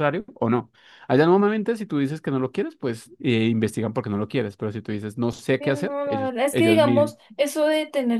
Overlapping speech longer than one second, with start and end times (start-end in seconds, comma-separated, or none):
5.6-7.2